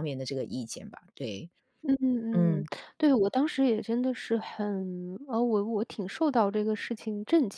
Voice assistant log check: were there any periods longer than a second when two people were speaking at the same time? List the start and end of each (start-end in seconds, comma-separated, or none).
none